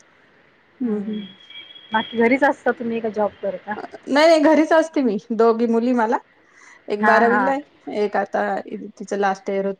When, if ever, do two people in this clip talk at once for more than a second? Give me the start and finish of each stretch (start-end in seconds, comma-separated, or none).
none